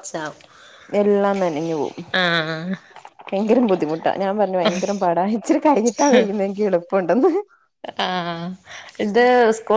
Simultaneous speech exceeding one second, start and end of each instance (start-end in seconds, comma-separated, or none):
none